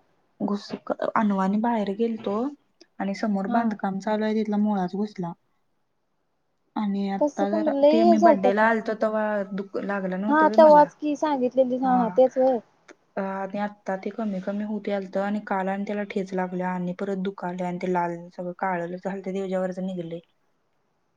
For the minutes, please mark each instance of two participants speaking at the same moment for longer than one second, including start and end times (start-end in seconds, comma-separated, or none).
7.2-8.7